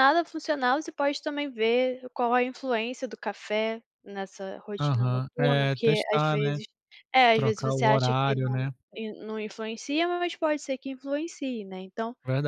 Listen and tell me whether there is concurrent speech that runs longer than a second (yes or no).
yes